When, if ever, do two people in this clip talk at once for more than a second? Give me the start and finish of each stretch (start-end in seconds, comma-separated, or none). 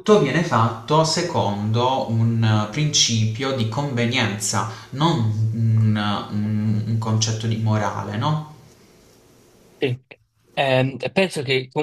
none